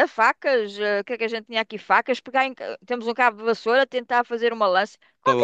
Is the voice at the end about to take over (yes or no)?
yes